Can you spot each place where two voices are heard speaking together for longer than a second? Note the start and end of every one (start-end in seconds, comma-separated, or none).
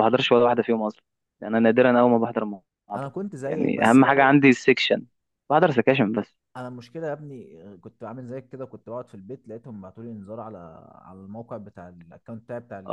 2.9-4.3